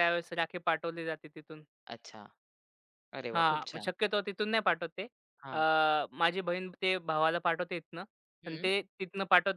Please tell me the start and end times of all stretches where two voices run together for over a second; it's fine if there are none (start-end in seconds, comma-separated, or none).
none